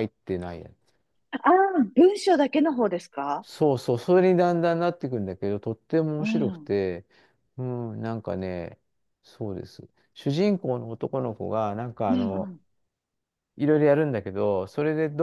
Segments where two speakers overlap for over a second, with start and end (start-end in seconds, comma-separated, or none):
none